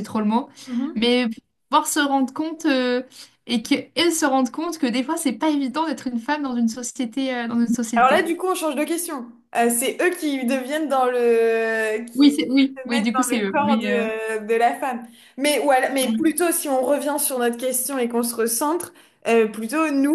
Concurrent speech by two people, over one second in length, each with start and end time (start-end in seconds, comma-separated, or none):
12.8-14.1